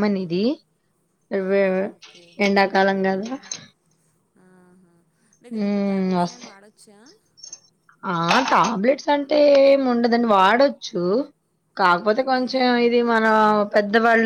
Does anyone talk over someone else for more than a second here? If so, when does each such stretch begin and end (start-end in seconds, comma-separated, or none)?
none